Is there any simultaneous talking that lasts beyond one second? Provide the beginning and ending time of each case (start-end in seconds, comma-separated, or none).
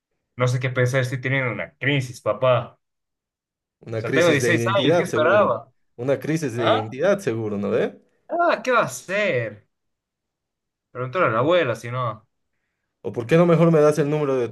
4.0-5.5